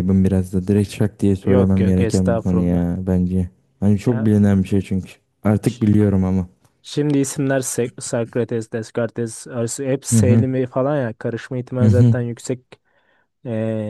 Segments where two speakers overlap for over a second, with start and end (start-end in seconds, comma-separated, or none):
1.4-2.9